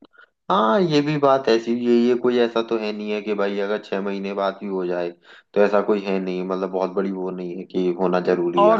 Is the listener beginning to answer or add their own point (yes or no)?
yes